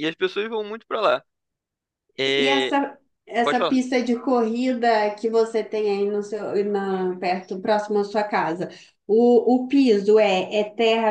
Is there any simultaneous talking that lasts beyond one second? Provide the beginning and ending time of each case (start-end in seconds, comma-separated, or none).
none